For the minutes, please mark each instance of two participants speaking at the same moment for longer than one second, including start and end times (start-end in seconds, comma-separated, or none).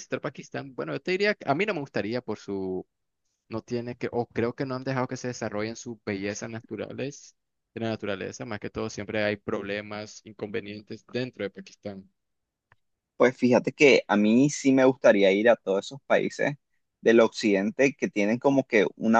none